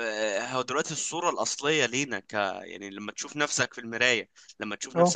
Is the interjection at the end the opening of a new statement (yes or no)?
no